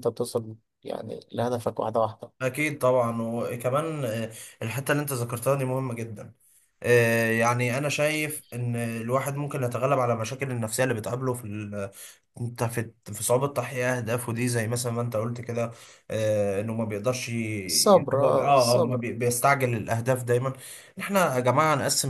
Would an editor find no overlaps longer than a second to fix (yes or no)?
no